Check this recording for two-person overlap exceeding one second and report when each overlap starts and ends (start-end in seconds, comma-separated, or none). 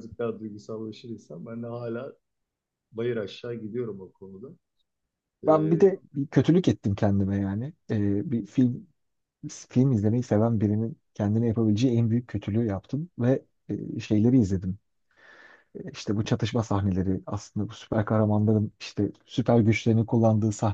none